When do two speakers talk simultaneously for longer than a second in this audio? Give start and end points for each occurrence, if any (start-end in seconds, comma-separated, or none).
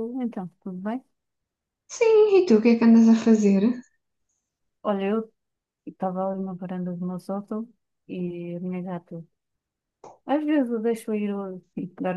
none